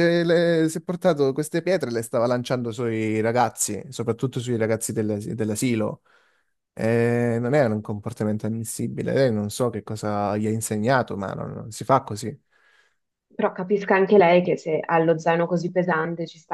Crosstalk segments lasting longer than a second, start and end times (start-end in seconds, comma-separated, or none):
none